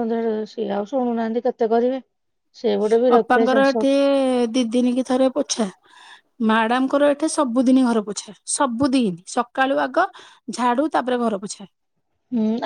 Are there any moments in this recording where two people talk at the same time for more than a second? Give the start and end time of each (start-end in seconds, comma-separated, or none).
none